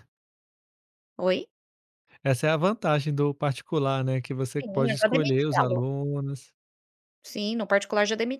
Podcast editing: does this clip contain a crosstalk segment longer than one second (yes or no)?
yes